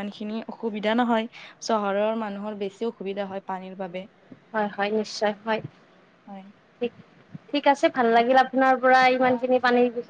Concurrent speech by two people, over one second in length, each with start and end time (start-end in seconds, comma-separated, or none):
none